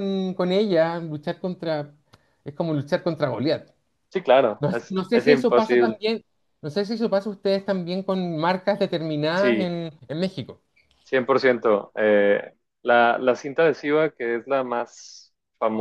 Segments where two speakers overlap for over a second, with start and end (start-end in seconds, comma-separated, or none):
4.6-6.0